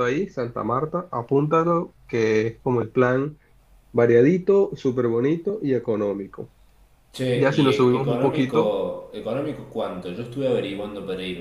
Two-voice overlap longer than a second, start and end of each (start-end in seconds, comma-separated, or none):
7.3-8.8